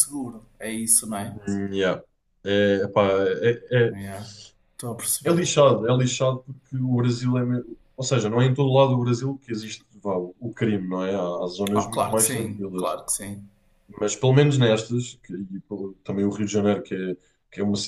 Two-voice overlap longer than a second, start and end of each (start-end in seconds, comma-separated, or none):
11.8-13.0